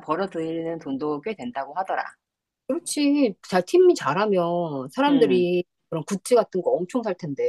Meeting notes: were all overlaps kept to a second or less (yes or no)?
yes